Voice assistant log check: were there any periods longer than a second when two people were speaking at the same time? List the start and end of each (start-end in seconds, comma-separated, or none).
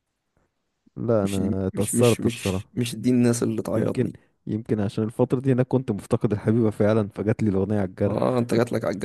1.2-2.6